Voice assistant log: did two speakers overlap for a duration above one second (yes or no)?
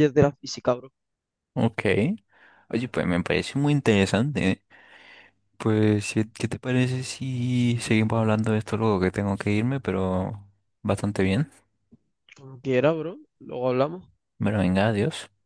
no